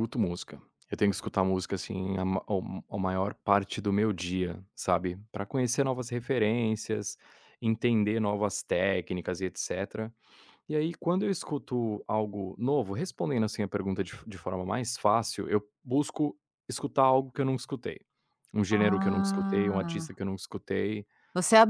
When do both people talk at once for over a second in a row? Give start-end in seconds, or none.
18.7-20.1